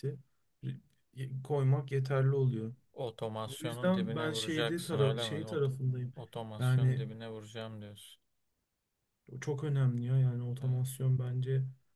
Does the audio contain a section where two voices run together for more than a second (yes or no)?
yes